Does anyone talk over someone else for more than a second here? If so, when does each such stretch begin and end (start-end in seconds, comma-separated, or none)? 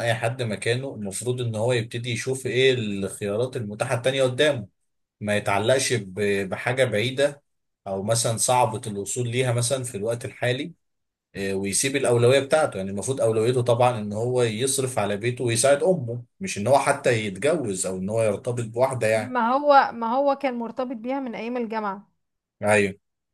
none